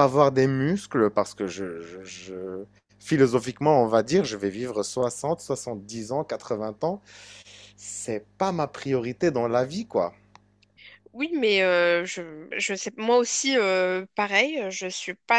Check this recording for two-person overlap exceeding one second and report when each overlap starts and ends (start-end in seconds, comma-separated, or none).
none